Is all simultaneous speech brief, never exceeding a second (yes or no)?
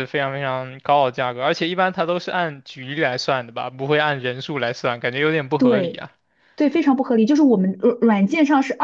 yes